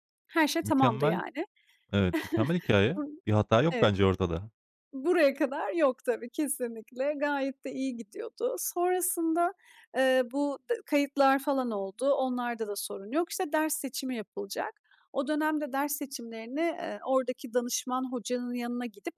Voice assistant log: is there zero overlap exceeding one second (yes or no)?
yes